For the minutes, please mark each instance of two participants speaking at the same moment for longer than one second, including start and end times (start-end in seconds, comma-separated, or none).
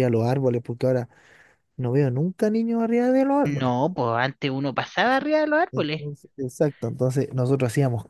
none